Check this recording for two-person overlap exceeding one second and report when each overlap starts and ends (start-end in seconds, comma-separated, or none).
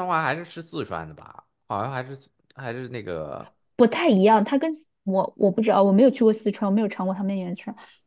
none